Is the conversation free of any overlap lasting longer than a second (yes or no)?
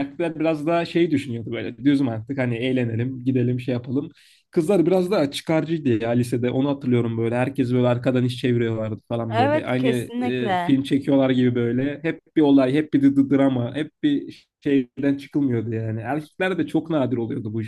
no